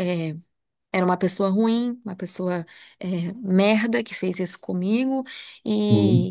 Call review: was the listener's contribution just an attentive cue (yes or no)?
yes